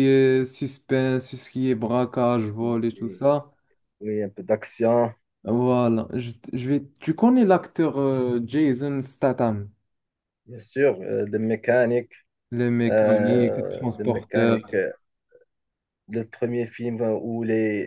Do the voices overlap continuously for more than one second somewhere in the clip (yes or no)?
yes